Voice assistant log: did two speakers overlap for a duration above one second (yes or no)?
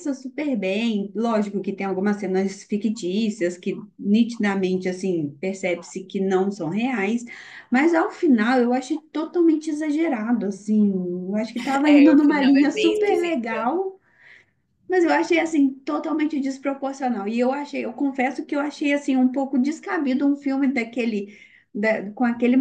yes